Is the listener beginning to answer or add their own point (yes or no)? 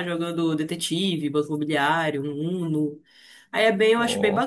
no